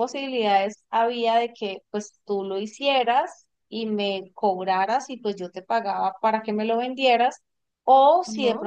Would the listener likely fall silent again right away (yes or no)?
yes